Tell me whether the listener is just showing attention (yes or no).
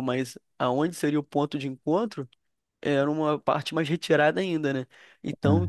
yes